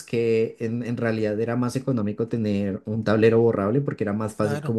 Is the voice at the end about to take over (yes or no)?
no